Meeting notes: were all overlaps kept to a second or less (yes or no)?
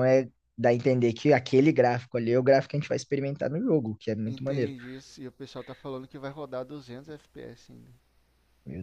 yes